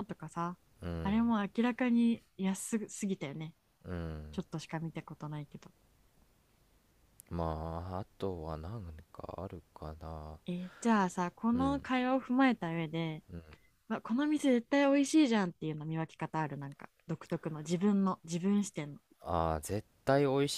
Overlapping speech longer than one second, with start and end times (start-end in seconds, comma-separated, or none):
none